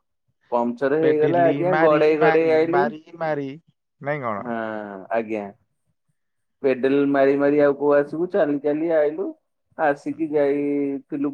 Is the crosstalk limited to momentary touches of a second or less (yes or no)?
no